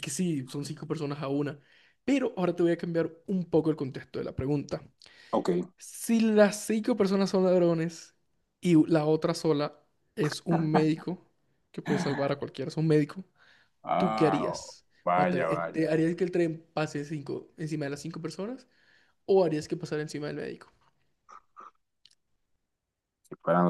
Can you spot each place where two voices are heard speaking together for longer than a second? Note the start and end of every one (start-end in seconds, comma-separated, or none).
14.0-16.0